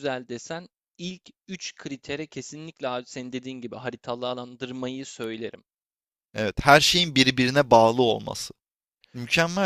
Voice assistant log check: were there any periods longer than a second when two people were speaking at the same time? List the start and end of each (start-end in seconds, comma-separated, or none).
none